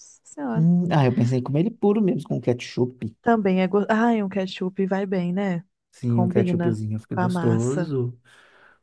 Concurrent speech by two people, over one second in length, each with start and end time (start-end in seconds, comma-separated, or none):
6.1-7.9